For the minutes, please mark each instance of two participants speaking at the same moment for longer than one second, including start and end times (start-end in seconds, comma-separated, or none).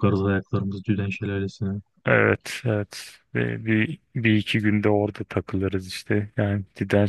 none